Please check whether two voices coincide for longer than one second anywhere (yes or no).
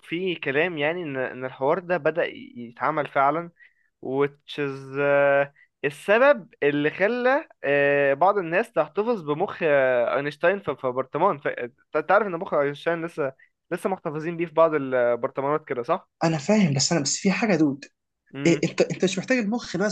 no